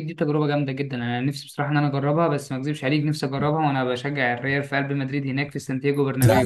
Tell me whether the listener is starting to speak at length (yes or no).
yes